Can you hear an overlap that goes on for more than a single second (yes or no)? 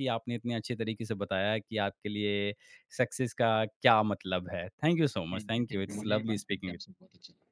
yes